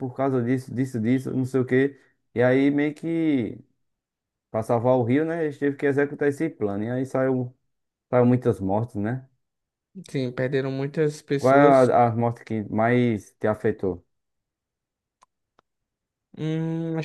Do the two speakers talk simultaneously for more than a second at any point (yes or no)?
no